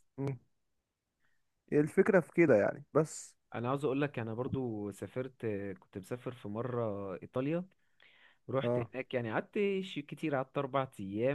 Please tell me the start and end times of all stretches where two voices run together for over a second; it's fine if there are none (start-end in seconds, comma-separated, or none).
none